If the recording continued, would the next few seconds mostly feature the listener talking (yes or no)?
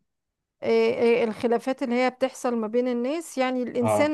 no